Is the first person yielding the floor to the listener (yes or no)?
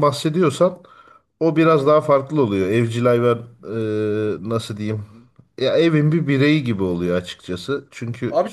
yes